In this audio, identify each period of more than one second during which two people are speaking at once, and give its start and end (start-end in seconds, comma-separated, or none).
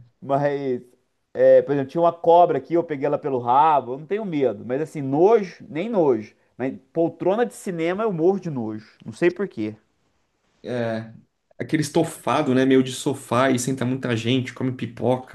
none